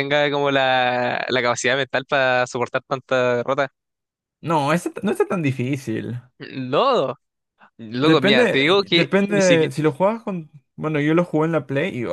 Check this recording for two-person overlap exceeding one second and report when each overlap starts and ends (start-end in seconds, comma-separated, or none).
8.0-9.7